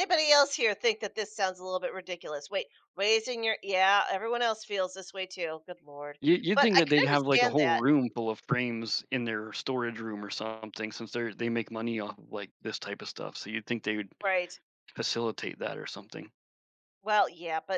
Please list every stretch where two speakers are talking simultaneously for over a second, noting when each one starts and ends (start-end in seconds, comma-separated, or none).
6.5-7.8